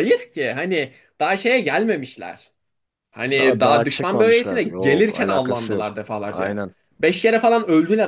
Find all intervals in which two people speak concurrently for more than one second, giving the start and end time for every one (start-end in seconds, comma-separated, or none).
3.4-6.6